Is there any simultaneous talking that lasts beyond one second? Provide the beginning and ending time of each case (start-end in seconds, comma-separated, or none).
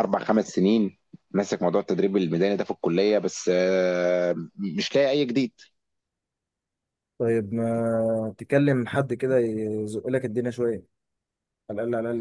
none